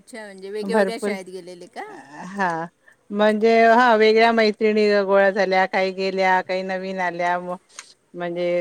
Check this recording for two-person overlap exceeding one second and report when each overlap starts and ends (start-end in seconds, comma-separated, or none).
none